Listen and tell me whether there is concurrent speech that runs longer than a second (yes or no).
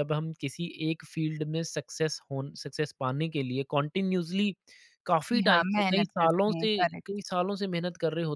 yes